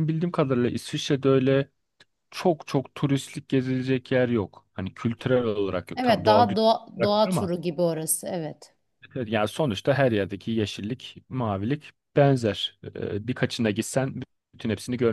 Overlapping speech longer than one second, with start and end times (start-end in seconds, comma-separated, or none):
6.0-7.5